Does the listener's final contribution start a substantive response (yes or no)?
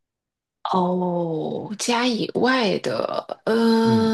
yes